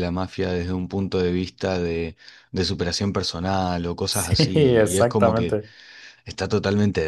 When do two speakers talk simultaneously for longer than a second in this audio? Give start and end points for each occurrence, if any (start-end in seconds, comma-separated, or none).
4.1-5.6